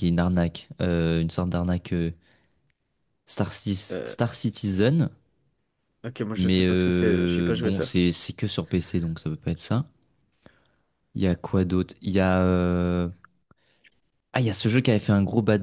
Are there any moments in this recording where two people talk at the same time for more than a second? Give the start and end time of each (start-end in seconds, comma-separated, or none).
6.3-8.0